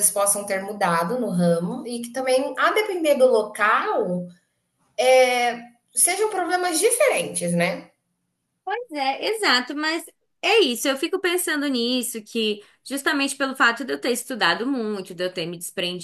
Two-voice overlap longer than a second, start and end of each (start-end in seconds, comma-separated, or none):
none